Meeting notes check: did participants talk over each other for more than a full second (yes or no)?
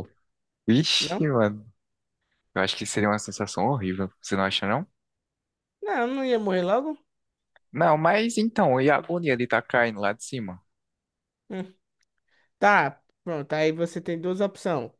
no